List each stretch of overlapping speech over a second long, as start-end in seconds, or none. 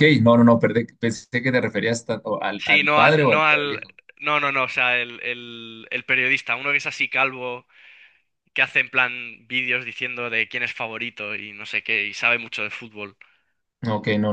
2.5-3.8